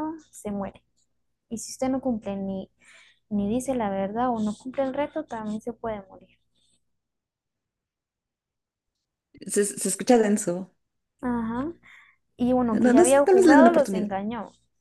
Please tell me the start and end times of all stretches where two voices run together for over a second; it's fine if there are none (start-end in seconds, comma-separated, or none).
12.7-14.1